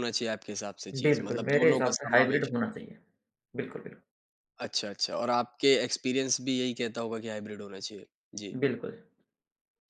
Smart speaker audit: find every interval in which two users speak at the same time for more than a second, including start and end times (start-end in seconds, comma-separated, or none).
1.0-2.5